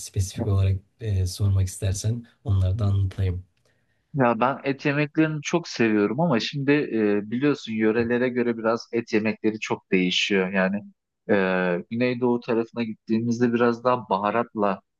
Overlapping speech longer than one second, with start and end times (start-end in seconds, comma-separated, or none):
none